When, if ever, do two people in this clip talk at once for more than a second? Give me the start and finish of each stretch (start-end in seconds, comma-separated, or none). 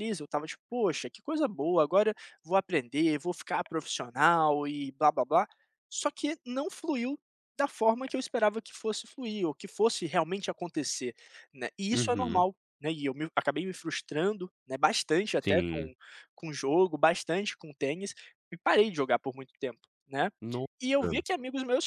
none